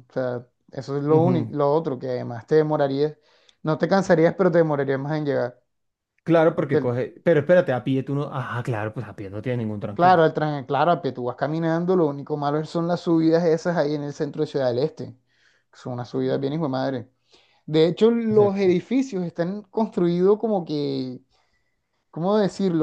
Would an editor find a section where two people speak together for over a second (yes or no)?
no